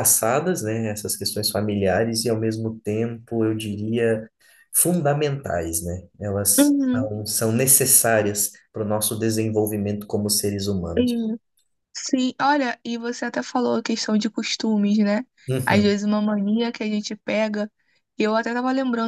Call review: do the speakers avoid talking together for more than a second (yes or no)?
yes